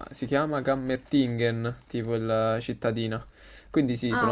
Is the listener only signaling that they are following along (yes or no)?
yes